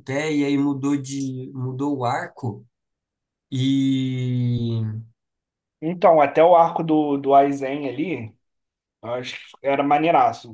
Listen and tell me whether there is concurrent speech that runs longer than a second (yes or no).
no